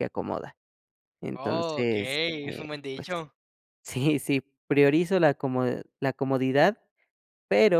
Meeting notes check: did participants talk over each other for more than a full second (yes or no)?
yes